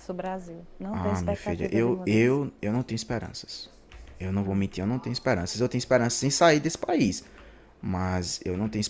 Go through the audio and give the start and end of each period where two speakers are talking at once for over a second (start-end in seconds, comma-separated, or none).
0.9-2.4